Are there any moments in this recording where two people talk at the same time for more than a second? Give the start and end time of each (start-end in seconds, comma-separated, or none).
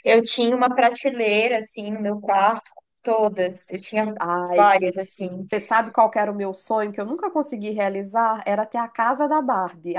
none